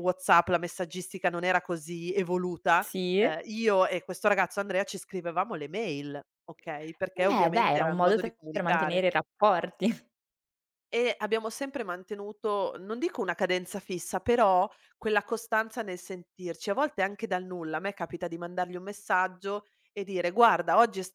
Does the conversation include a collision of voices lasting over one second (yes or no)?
yes